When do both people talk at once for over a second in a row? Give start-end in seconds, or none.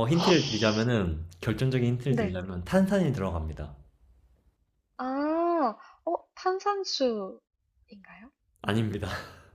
none